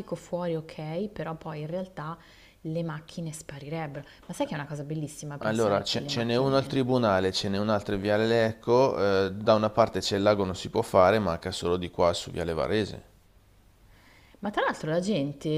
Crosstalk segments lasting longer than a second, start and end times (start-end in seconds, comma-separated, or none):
5.5-6.8